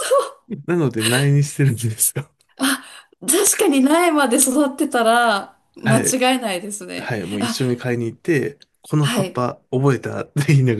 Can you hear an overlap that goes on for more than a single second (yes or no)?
no